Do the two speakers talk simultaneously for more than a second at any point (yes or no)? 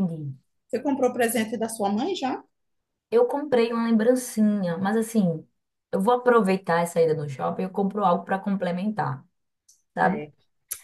no